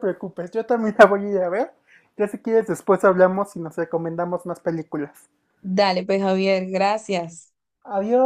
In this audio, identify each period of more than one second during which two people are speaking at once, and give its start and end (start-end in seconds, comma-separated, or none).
none